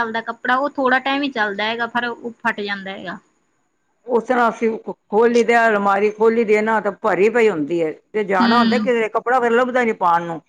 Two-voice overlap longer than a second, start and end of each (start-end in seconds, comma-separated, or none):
none